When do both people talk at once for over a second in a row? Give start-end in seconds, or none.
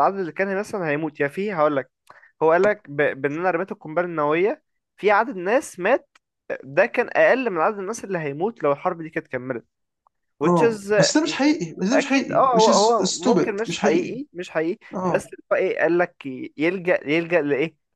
11.9-14.2